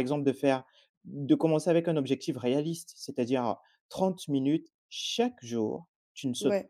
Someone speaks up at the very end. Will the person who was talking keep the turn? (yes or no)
yes